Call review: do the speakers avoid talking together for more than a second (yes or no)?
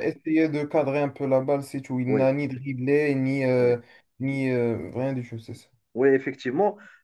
yes